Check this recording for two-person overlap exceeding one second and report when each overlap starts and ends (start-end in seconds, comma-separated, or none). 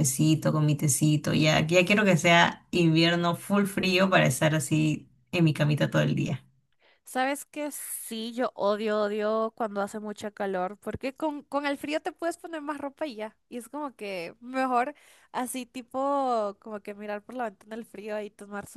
none